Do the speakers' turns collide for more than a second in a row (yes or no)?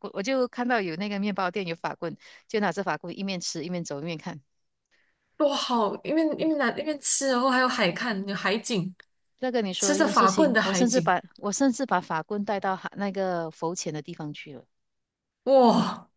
yes